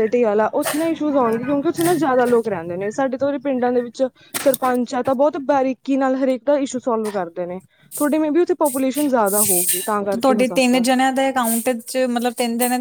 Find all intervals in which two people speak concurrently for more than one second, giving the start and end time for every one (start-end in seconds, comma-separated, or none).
none